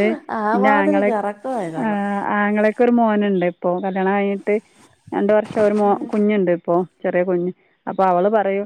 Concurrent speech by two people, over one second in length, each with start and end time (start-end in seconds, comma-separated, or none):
none